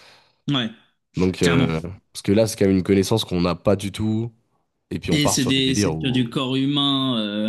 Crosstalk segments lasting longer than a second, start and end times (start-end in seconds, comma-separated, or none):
5.1-6.3